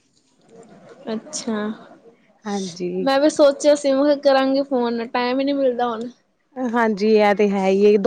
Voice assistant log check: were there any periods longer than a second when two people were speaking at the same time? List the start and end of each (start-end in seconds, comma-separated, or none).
none